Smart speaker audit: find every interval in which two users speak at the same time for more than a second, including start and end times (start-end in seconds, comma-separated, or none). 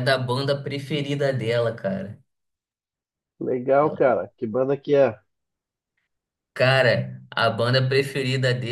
none